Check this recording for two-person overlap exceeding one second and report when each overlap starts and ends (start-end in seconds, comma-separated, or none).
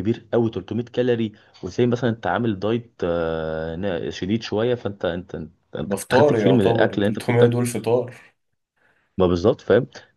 5.8-7.5